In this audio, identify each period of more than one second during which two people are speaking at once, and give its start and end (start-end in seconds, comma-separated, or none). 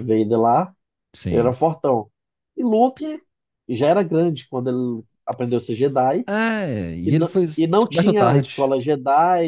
7.0-8.7